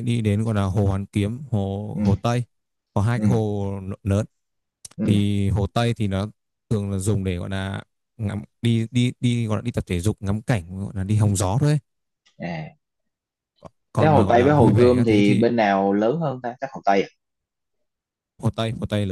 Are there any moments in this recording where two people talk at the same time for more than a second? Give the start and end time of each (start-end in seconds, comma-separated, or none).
14.0-15.4